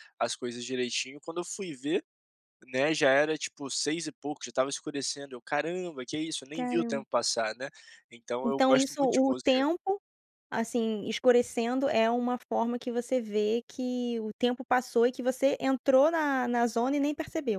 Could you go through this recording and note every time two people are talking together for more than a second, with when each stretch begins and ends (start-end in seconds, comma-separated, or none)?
8.4-9.7